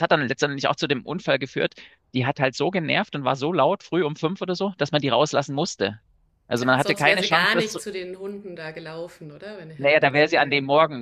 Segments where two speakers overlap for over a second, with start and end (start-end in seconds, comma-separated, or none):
6.6-7.8